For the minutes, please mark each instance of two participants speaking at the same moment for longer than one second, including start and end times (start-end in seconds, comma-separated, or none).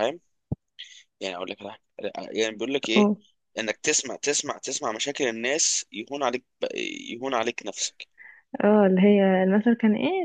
none